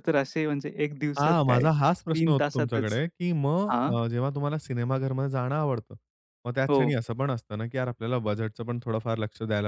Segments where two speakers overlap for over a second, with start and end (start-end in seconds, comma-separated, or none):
1.2-3.0